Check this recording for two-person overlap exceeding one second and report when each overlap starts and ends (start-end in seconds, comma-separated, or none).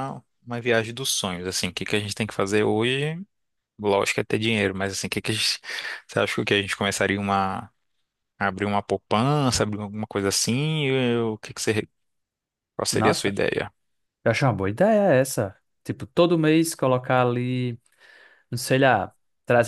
none